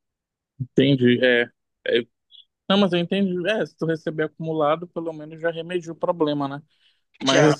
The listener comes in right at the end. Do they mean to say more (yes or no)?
no